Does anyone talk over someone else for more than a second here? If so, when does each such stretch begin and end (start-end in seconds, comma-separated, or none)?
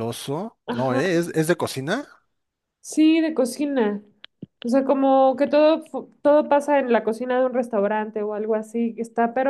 none